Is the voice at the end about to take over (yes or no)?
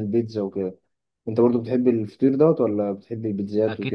yes